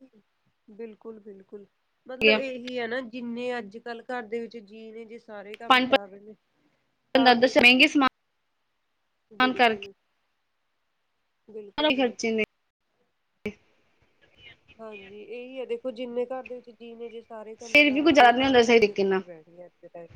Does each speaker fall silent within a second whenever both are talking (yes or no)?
no